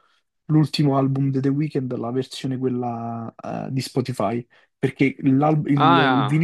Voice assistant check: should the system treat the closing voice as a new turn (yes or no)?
no